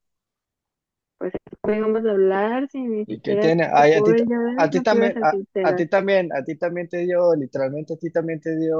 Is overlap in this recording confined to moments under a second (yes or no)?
no